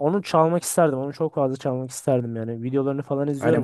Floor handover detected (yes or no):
yes